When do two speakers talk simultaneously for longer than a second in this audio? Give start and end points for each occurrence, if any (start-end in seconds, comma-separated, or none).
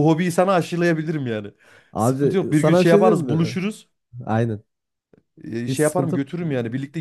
2.0-3.6